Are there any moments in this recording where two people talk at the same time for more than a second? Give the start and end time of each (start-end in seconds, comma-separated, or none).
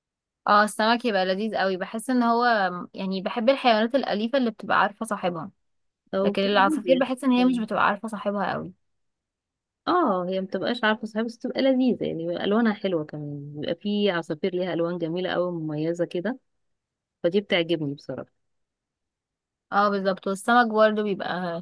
6.2-7.7